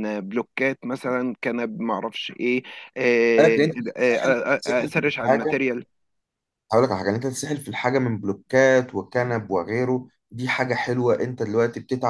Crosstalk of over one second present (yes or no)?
yes